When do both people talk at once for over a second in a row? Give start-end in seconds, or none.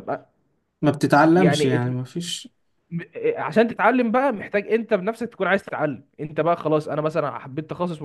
none